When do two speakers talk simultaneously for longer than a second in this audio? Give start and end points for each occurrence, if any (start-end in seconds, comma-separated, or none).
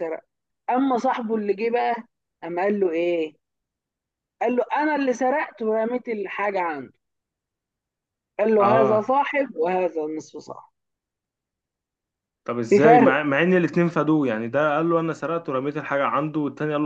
none